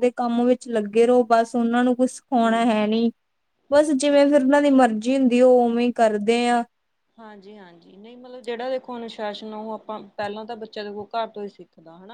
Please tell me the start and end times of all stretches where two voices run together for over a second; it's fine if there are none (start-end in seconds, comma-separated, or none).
none